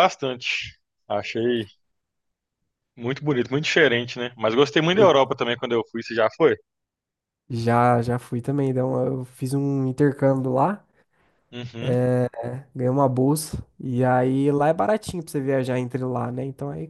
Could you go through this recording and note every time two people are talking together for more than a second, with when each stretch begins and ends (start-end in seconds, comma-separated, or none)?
none